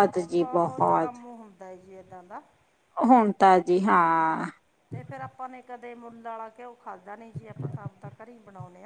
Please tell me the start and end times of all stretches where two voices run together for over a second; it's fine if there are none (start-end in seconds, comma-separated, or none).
none